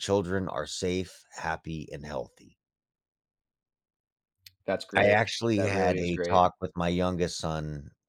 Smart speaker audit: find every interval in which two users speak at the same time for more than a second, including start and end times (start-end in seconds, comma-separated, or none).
4.9-6.5